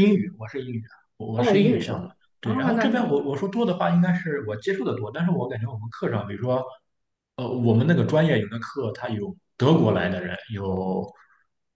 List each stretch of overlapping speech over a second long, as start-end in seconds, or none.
1.3-3.2